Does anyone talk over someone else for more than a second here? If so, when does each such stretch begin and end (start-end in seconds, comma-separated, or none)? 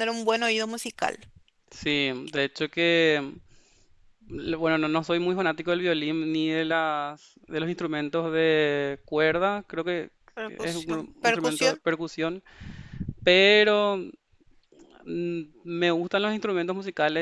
10.5-11.8